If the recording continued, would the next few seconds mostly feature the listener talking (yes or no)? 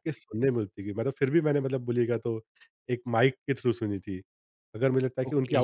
no